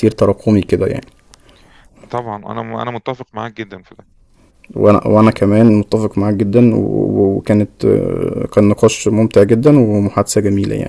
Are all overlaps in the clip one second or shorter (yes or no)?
yes